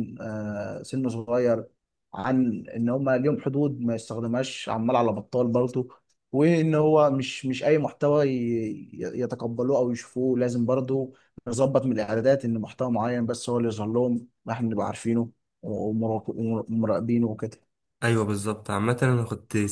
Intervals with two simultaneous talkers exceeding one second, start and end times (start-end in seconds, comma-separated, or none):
none